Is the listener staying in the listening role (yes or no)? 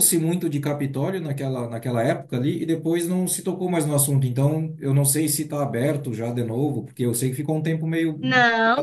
no